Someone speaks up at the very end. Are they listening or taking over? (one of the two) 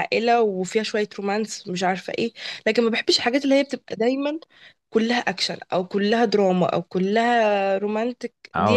taking over